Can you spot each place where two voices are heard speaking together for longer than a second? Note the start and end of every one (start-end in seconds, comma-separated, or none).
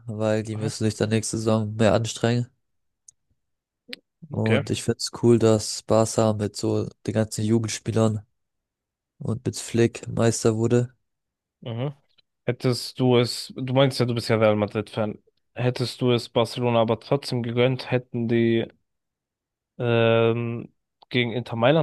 none